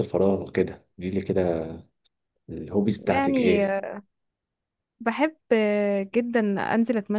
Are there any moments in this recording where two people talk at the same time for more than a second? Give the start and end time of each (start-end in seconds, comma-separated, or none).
none